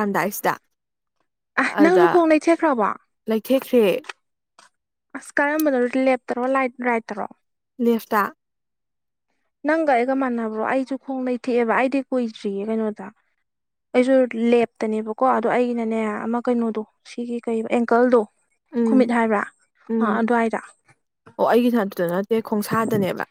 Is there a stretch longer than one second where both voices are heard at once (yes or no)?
no